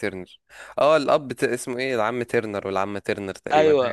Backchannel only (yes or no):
no